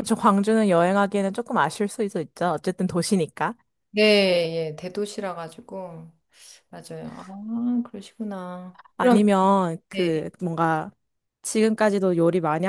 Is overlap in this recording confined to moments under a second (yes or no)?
yes